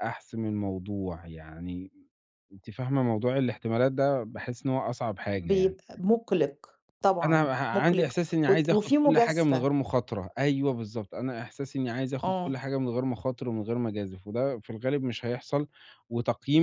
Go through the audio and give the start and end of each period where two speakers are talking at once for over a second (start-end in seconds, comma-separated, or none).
7.2-9.7